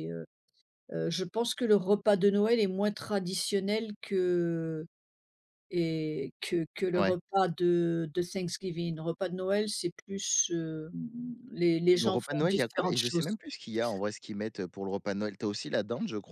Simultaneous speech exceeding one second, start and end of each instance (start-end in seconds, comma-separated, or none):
11.9-13.3